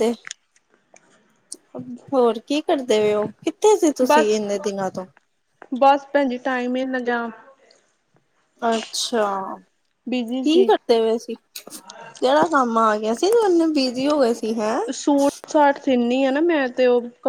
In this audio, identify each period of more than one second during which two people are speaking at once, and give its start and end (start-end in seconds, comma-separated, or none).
none